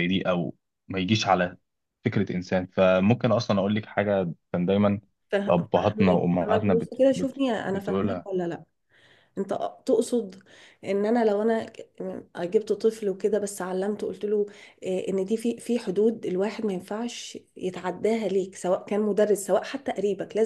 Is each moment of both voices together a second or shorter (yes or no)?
no